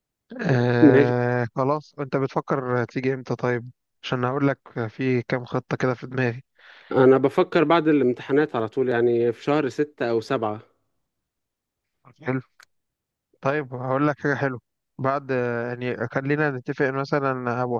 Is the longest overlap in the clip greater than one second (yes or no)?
no